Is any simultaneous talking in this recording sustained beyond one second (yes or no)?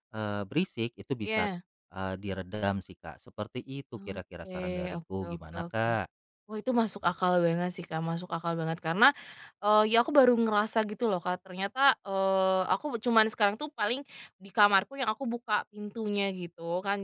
yes